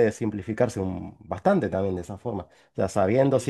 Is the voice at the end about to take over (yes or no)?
no